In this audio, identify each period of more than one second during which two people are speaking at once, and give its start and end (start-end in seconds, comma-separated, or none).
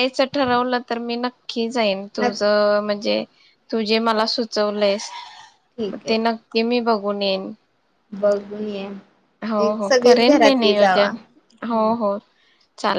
9.7-11.1